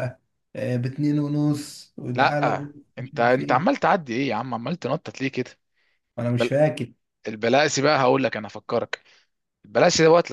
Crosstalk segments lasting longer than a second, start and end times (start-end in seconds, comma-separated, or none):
2.2-3.6